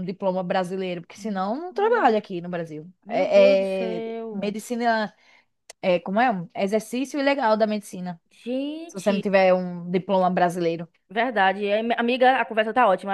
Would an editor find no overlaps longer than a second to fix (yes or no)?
no